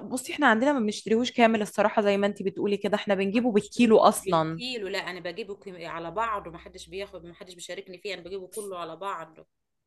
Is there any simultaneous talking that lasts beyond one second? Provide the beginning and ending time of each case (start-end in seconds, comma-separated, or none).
3.4-4.6